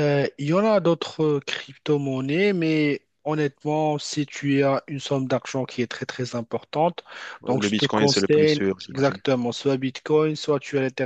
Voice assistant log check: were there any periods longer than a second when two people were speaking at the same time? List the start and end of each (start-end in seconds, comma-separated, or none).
7.5-9.2